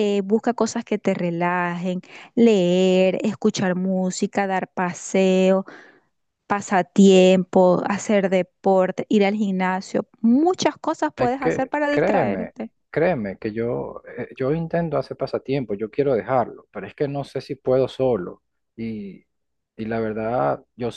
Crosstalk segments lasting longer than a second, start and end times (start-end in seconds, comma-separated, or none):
11.2-12.5